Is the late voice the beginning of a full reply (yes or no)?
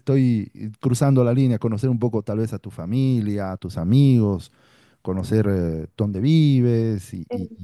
yes